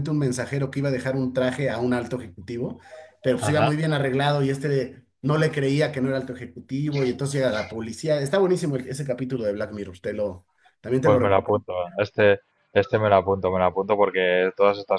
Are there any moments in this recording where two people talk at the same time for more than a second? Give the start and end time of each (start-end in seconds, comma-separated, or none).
none